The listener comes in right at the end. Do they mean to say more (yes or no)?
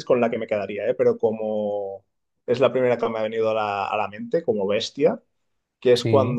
no